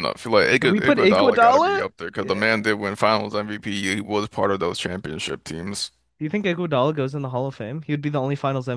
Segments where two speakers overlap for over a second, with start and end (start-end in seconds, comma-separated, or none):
0.6-2.5